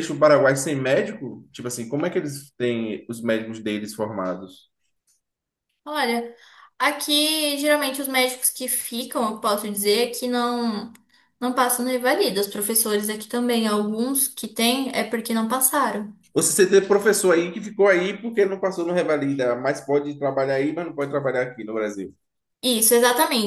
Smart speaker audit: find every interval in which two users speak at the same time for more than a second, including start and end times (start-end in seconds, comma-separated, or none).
none